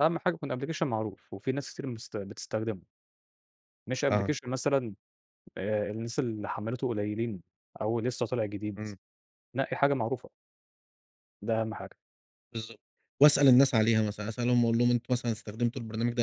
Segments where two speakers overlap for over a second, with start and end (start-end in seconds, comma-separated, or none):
none